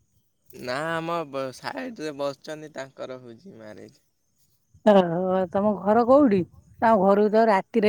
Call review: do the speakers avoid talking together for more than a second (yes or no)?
yes